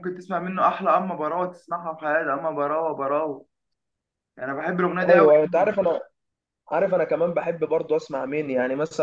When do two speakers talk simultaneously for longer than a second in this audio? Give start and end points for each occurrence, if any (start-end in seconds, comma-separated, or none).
none